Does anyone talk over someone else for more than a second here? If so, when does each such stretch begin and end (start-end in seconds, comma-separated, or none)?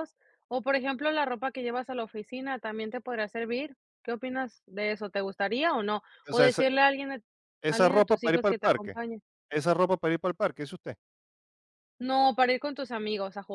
7.7-9.0